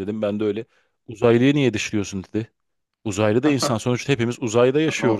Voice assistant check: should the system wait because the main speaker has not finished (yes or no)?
no